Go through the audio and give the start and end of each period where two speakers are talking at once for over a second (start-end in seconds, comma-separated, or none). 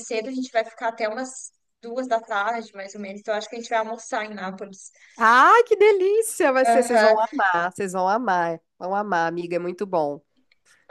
none